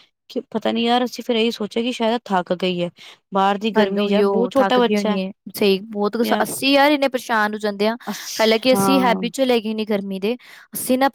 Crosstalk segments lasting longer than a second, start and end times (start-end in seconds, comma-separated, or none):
none